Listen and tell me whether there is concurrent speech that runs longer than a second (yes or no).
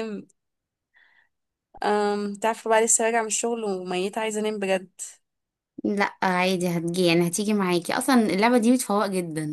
no